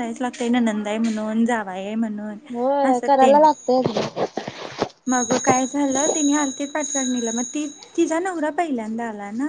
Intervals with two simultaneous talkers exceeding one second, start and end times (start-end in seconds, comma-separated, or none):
none